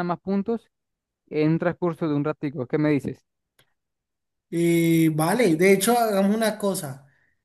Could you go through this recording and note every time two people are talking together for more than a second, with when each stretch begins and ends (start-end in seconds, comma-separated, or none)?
none